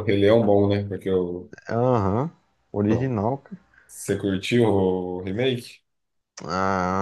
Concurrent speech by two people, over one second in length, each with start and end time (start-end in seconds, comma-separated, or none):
none